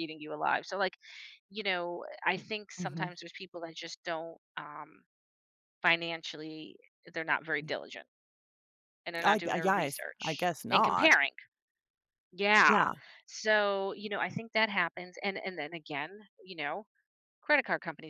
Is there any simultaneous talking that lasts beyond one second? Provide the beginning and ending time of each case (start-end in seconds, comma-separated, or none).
9.2-11.2